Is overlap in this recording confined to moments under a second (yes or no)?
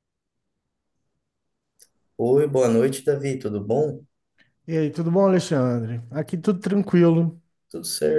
yes